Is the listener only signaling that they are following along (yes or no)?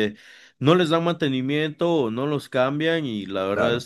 yes